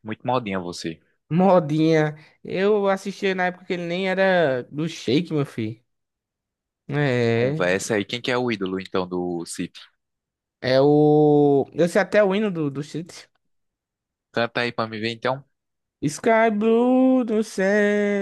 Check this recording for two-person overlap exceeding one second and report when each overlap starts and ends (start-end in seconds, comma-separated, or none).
none